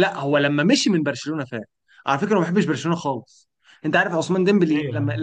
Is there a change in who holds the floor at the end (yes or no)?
no